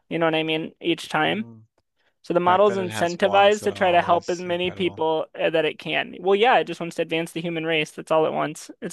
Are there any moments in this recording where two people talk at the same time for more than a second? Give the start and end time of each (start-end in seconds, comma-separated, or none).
2.2-5.0